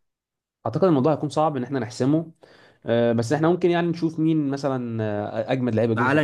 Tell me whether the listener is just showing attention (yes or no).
no